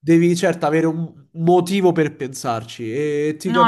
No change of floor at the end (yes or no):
yes